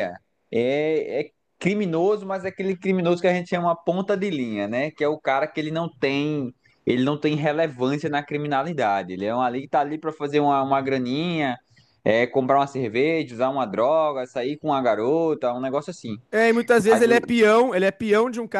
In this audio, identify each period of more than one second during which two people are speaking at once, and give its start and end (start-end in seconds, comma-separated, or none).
none